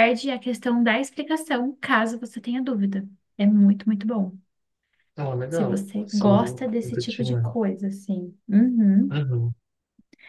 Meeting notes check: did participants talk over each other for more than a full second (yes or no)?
yes